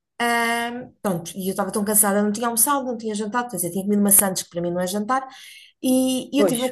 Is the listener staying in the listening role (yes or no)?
yes